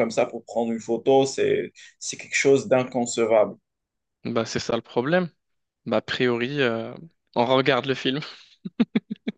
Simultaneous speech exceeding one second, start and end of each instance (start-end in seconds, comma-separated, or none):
none